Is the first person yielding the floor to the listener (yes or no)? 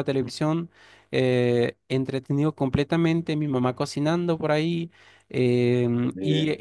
no